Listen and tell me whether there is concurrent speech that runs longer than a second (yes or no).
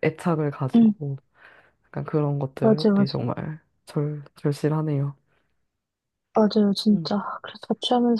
no